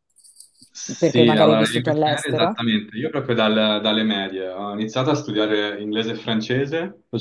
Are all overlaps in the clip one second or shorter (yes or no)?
no